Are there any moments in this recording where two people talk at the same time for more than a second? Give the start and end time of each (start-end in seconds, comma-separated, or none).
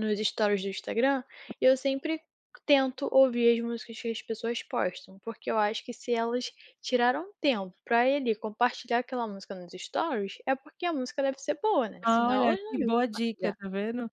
12.0-13.6